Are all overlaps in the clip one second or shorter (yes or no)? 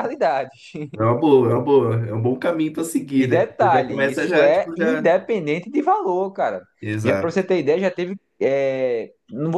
no